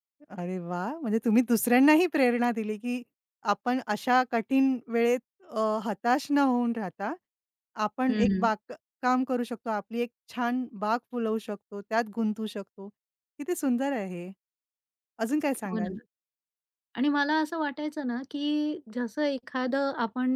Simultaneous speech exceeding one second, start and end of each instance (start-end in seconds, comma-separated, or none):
none